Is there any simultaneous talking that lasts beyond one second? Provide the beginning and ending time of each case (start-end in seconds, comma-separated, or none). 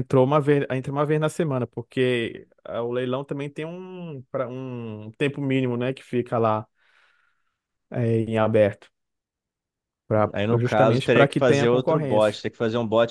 10.3-12.4